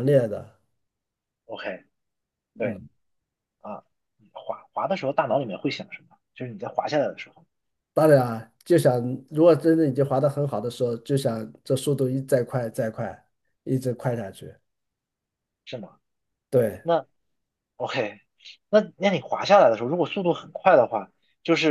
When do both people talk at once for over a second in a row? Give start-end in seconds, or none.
none